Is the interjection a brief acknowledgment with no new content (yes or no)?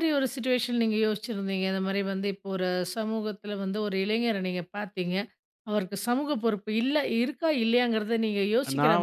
no